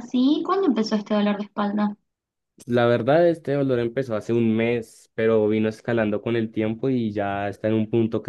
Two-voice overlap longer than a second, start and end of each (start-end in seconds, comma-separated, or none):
none